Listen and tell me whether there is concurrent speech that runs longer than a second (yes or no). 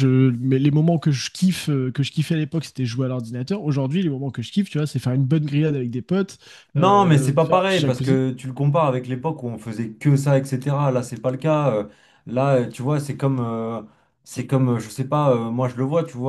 yes